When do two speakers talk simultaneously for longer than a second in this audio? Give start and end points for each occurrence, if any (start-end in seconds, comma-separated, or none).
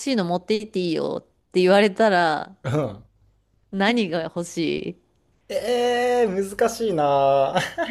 none